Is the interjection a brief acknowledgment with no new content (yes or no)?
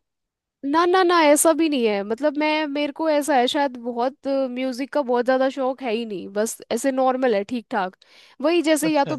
yes